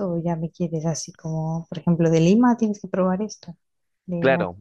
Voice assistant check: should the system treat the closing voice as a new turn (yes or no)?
yes